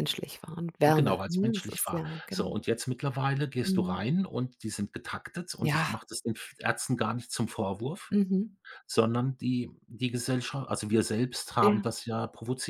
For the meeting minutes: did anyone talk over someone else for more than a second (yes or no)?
yes